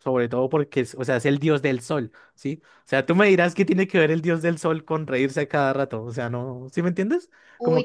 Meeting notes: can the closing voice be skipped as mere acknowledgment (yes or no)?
no